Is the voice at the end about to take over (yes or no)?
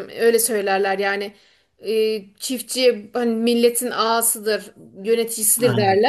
no